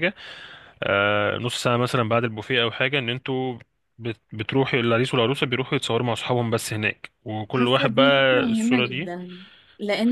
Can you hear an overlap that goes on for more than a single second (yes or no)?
yes